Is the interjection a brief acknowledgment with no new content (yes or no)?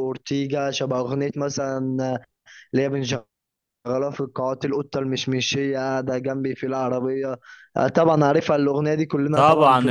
no